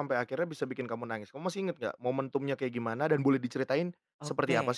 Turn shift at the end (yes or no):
yes